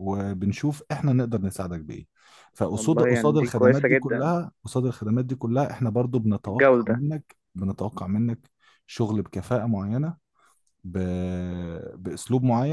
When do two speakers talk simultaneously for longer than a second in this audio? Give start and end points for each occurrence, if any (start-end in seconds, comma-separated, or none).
2.7-4.3